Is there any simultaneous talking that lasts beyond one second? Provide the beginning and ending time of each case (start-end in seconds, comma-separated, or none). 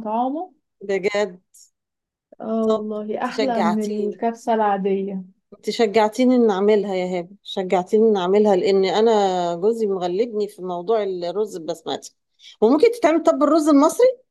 2.7-4.2